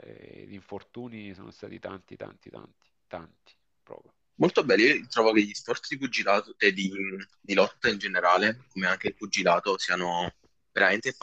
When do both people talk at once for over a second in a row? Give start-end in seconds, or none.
none